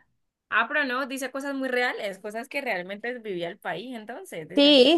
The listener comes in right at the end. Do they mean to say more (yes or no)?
yes